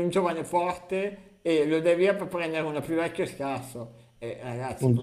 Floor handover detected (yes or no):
no